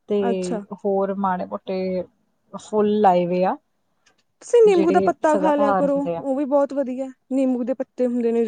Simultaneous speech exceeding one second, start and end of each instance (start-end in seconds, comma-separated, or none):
4.7-6.2